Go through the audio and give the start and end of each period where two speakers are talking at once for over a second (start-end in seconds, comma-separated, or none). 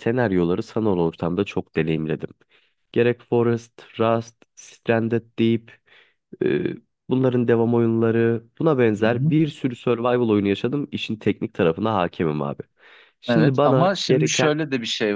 13.3-14.6